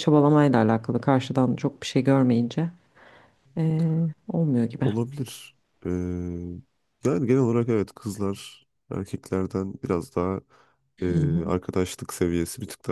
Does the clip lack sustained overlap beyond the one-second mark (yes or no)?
yes